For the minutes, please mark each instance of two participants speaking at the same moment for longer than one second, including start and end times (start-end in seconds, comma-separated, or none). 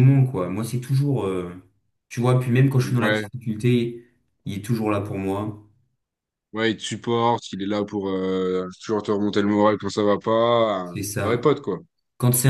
none